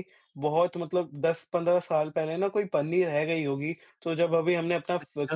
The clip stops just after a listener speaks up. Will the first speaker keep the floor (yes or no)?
yes